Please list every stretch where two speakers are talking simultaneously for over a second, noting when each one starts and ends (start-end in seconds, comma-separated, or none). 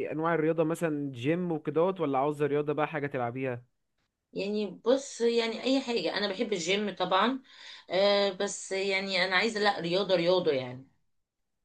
none